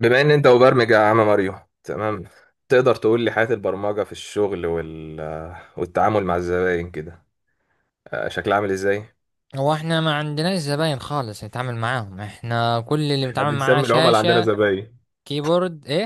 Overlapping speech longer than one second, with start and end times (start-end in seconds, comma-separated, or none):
13.2-14.5